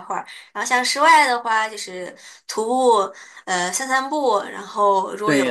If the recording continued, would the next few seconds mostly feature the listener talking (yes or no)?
no